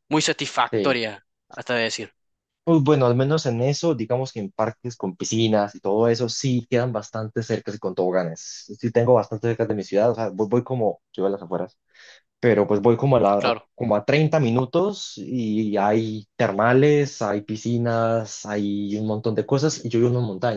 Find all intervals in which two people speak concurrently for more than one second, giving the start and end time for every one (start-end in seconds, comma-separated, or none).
none